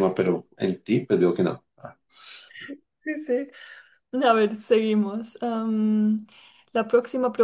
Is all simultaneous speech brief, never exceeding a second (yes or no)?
yes